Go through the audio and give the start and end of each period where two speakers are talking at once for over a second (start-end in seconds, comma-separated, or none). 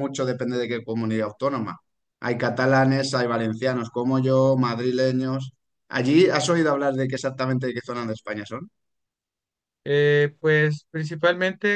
none